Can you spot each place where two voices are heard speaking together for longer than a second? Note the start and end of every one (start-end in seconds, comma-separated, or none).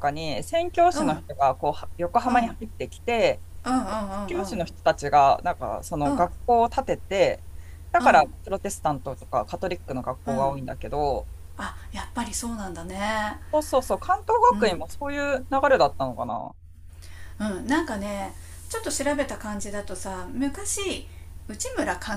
none